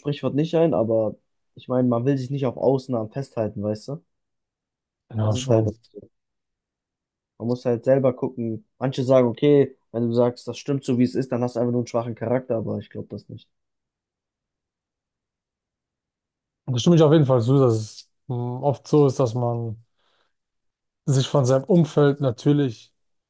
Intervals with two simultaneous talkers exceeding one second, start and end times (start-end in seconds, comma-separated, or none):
none